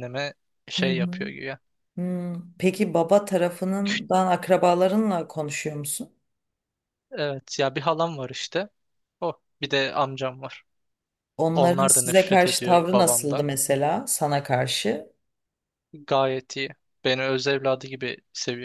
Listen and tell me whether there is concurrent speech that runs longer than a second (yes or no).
yes